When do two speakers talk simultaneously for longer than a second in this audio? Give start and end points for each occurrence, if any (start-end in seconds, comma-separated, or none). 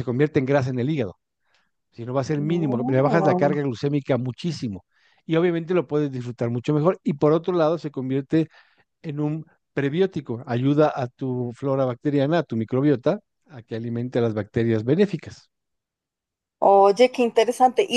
2.4-3.6